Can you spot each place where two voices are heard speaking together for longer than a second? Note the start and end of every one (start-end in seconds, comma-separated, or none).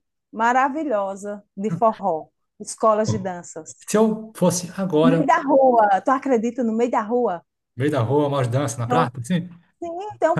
none